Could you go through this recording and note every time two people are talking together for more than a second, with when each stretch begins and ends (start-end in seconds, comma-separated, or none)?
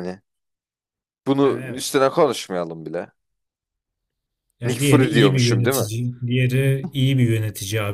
4.6-5.9